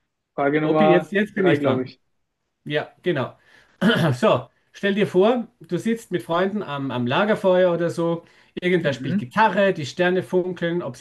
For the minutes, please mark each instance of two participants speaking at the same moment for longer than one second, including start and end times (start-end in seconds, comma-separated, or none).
0.6-1.9